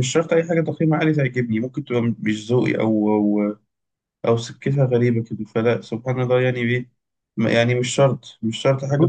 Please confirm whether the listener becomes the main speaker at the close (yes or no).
yes